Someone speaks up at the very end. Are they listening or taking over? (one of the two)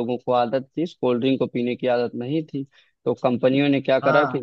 taking over